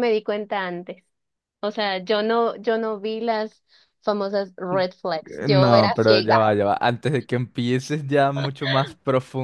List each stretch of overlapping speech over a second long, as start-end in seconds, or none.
5.2-6.5